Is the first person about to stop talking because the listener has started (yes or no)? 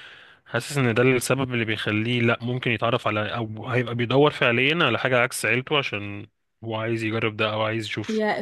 yes